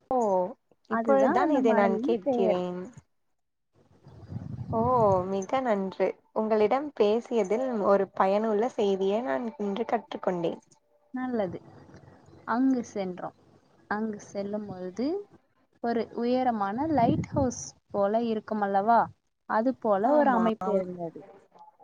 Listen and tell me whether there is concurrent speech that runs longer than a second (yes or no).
yes